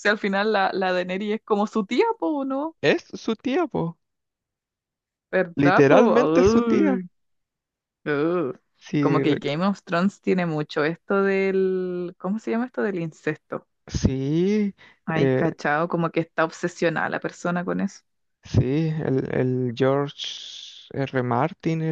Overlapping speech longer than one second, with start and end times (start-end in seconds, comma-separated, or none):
5.5-7.0